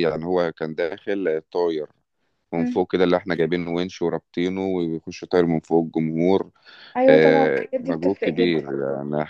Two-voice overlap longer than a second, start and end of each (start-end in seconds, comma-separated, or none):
7.1-8.6